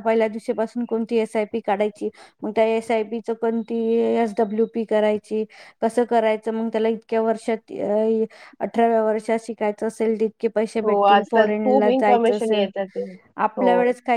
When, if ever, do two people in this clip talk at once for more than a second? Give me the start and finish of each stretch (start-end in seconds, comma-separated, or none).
10.8-12.6